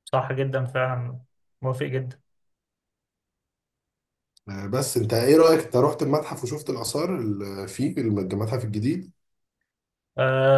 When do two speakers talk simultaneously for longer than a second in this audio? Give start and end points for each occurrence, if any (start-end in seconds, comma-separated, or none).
none